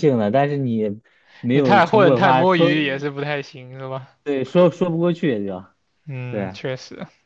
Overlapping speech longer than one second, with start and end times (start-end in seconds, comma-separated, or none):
1.5-2.8